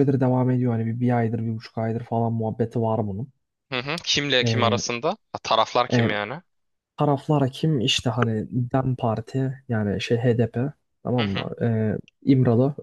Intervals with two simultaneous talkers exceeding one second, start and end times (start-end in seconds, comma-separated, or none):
none